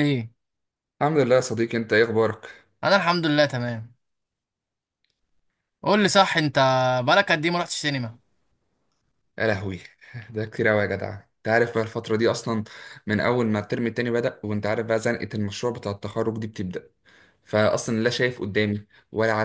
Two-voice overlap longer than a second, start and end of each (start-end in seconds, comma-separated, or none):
none